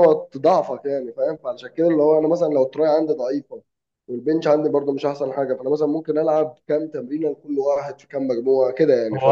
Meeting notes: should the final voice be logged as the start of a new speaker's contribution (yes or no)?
yes